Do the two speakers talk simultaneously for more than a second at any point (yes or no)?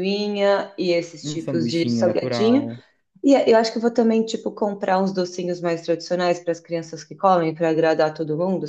yes